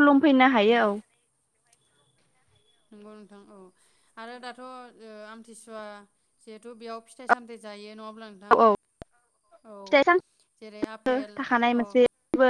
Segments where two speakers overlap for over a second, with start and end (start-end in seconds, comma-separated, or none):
none